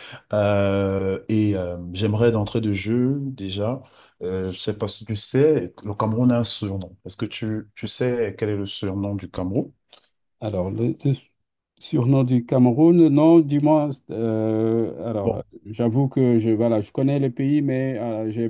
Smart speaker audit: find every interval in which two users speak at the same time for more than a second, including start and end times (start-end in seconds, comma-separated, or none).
none